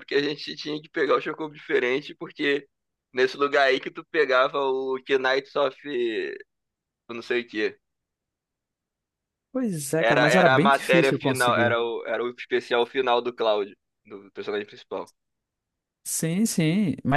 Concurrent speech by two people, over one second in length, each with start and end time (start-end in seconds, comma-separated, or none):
10.0-11.8